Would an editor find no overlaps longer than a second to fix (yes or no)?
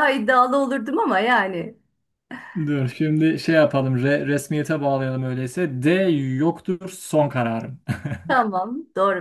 yes